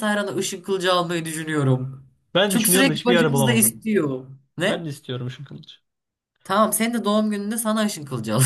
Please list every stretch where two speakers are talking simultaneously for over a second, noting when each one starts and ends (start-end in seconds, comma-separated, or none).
2.5-3.8